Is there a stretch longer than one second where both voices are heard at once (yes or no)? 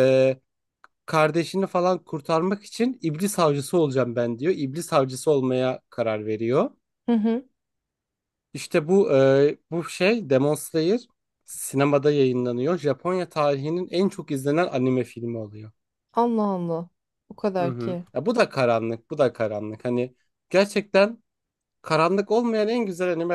no